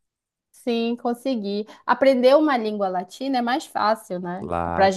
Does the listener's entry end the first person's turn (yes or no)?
no